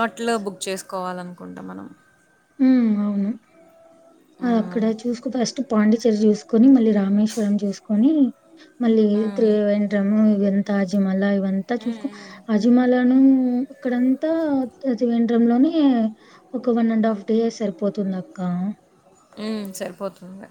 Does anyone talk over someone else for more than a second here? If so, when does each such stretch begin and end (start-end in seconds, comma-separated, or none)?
none